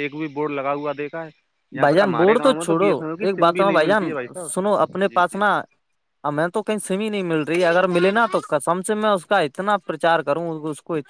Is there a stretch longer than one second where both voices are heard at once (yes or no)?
yes